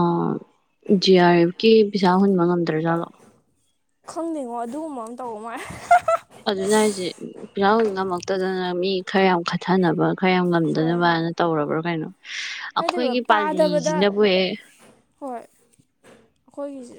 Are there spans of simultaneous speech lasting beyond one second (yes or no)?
yes